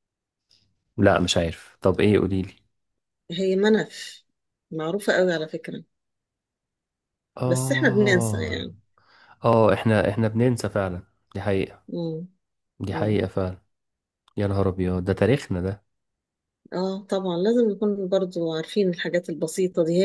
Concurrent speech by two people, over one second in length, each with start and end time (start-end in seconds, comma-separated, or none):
7.5-8.7